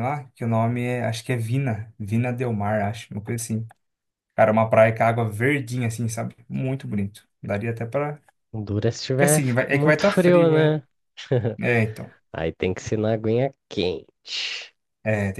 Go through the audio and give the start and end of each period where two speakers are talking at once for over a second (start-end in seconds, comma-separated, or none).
9.1-10.8